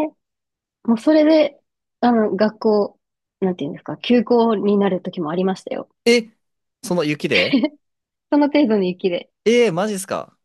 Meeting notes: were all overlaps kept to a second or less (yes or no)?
yes